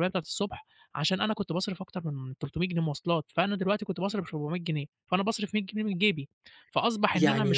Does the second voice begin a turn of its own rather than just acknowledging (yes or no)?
no